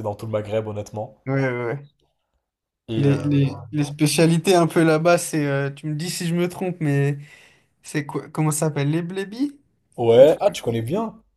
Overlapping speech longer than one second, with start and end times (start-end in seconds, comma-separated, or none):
none